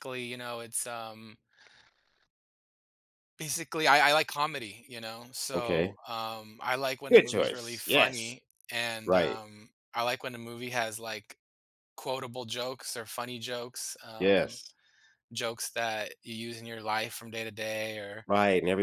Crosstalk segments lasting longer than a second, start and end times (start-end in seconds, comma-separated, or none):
7.1-8.3